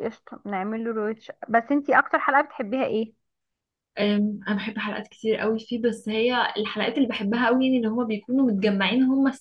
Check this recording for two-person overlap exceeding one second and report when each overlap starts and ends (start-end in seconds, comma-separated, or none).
none